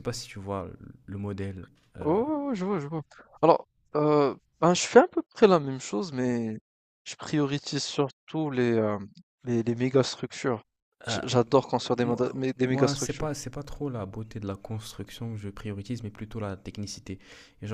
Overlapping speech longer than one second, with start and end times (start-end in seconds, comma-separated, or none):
12.0-13.3